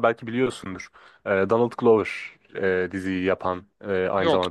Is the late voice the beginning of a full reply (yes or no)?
no